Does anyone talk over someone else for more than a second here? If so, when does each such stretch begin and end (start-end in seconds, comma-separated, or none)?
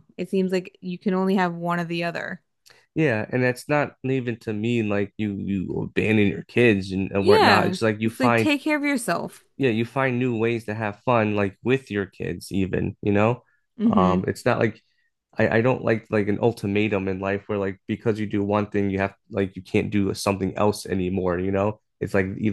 7.2-8.5